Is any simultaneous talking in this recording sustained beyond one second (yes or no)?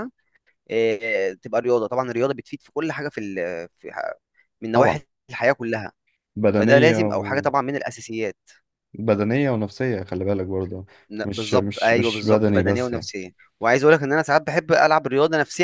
yes